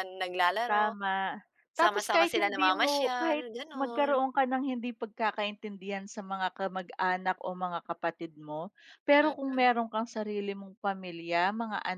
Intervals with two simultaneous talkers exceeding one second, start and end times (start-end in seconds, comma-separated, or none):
1.8-4.3